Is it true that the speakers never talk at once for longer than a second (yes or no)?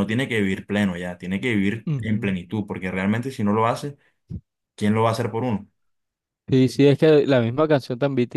yes